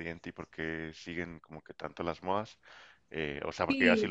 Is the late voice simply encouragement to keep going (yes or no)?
yes